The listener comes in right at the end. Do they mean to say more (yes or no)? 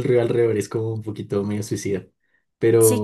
yes